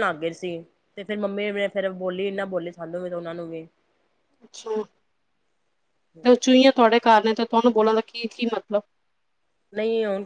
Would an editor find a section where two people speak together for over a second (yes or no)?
no